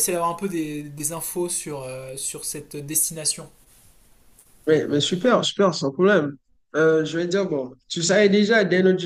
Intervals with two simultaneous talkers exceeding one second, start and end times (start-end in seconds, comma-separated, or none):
none